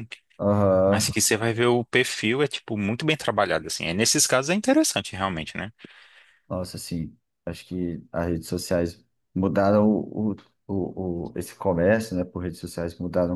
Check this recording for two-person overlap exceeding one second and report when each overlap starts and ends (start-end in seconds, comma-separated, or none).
none